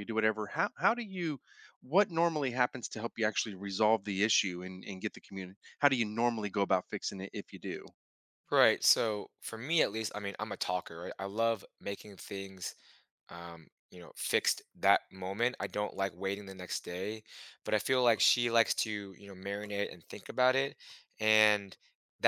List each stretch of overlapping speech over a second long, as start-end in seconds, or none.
none